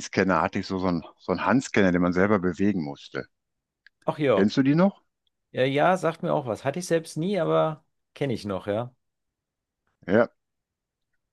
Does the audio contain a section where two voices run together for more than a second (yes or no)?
no